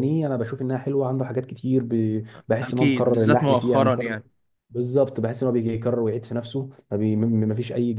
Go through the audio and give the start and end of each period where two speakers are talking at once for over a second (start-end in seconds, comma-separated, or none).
2.6-4.2